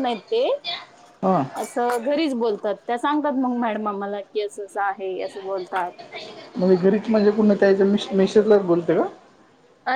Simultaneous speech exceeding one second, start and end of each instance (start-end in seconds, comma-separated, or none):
none